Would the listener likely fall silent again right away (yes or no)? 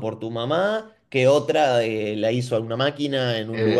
yes